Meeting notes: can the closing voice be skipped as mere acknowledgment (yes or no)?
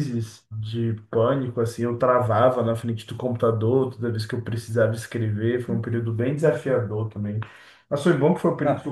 yes